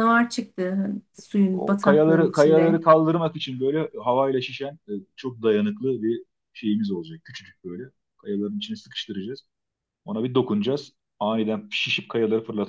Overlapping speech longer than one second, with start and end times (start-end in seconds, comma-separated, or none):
1.5-2.8